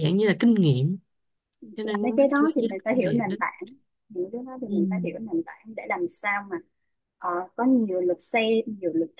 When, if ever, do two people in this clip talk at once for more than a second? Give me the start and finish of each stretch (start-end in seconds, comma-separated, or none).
1.8-3.4